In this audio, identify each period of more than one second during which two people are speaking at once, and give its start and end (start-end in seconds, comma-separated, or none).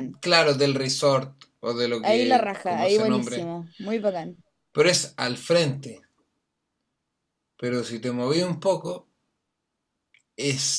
2.0-3.5